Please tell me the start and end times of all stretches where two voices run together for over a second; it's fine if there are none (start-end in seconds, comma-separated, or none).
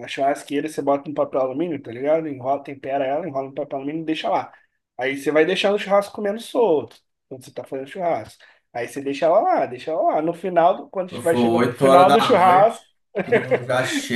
11.0-12.8